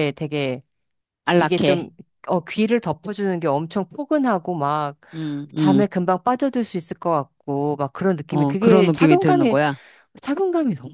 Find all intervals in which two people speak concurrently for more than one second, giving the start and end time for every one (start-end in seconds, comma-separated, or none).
8.3-9.6